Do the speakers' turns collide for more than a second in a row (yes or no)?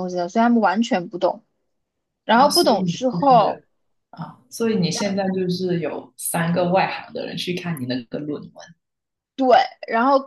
yes